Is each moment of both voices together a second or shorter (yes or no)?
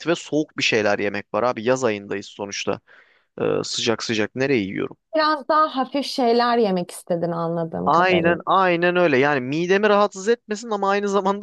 yes